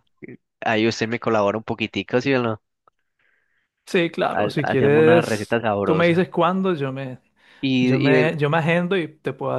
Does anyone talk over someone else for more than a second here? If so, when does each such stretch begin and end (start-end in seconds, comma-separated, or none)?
4.3-6.3